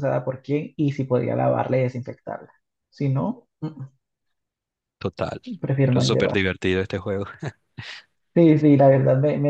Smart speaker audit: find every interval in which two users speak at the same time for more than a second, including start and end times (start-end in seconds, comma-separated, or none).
none